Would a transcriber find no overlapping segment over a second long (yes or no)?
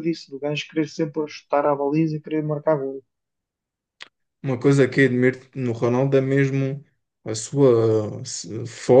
yes